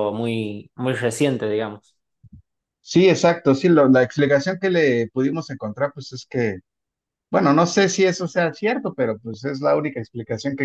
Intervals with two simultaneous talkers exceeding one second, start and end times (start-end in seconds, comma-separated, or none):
none